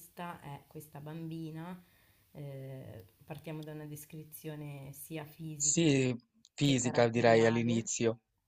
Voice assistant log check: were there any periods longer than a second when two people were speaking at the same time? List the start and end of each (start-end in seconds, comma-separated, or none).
6.6-7.9